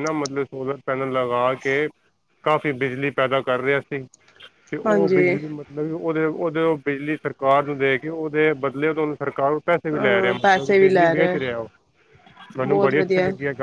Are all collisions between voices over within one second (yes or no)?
no